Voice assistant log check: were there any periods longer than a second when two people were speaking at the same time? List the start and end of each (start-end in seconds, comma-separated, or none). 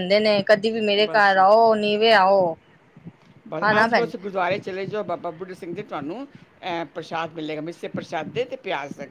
none